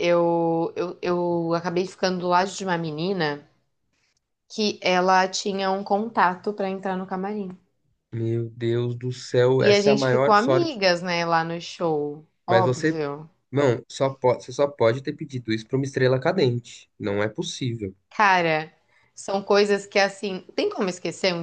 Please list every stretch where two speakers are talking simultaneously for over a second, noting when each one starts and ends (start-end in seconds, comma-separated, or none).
9.6-10.8